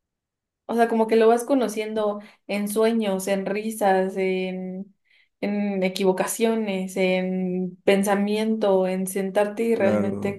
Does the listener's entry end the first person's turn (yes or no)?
no